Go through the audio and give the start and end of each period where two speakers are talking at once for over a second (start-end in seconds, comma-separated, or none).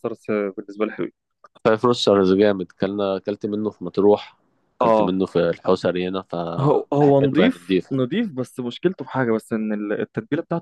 6.6-7.8